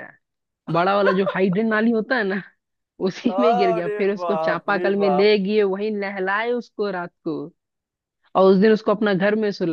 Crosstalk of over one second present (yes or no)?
yes